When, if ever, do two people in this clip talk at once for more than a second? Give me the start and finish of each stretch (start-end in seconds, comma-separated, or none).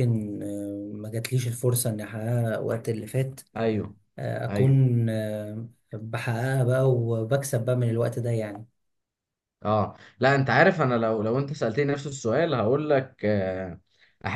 none